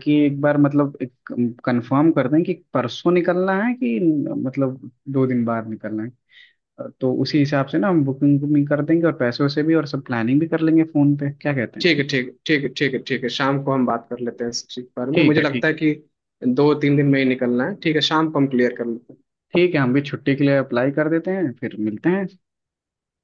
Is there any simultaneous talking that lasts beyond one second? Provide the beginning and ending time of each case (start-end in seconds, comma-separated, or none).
none